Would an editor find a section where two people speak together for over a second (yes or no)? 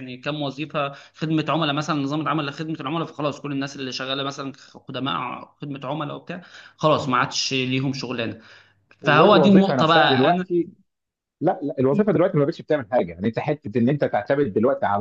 yes